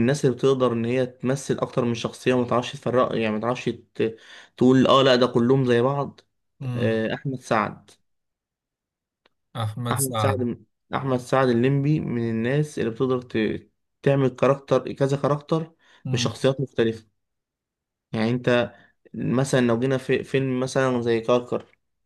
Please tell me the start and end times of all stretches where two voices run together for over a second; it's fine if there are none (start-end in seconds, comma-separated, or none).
none